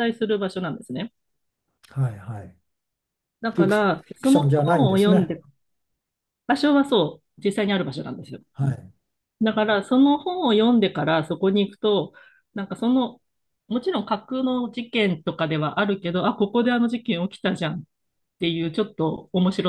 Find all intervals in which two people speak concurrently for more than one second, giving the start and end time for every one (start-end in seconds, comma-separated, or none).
3.5-5.3